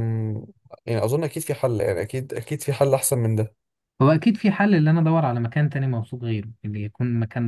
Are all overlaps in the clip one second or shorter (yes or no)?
yes